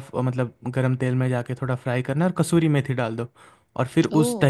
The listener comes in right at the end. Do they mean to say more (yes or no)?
no